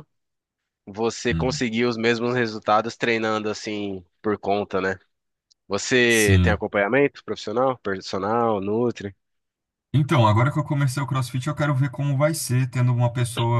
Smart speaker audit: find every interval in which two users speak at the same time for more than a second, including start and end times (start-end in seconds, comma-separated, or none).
none